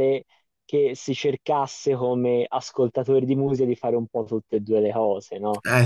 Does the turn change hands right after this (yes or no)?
no